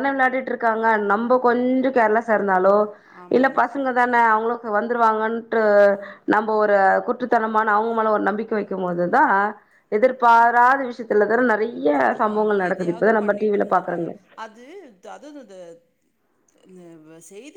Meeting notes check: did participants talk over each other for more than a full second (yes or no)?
yes